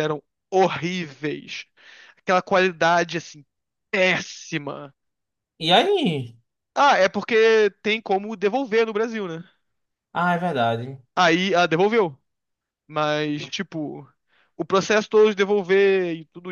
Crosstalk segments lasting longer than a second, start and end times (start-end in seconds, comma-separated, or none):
none